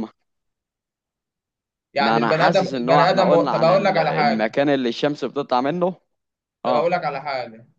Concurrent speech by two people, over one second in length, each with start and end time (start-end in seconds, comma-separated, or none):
2.0-4.6